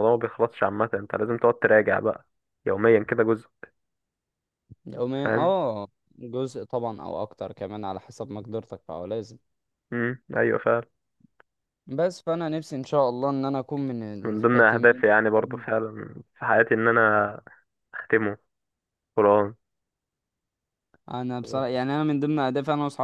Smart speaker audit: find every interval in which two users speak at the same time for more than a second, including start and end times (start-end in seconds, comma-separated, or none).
14.3-15.6